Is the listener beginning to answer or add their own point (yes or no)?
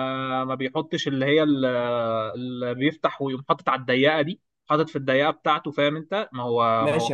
yes